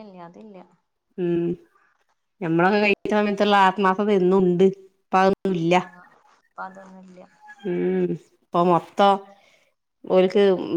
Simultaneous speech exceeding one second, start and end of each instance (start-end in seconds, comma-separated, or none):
none